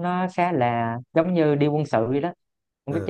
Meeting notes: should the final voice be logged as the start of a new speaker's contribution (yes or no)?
no